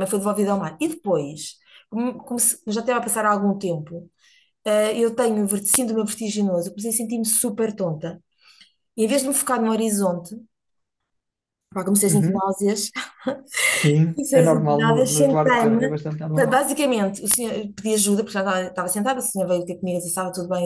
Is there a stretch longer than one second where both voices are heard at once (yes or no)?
yes